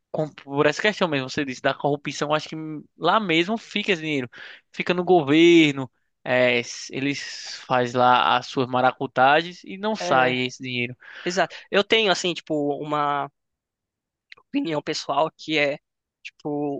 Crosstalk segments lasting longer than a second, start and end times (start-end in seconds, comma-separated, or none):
none